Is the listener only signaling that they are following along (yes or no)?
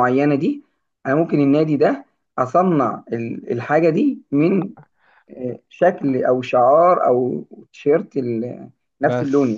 no